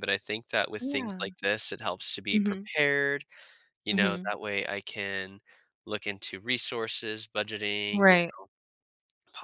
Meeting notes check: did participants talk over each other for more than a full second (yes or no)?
no